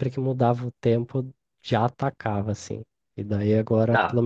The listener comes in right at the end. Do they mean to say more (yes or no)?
no